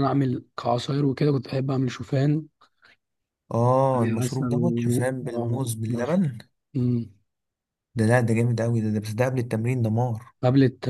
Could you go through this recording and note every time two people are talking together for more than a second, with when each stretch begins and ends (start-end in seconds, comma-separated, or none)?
4.2-6.2